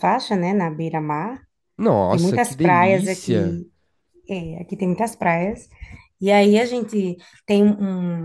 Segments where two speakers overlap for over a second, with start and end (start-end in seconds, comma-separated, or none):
2.1-3.6